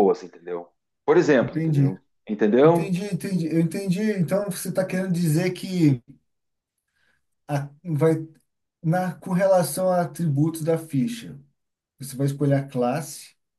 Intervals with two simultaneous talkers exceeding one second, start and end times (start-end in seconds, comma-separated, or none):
none